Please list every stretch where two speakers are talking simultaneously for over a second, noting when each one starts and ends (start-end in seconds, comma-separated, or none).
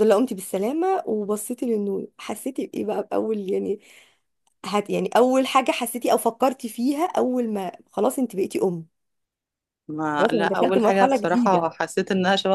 10.2-11.7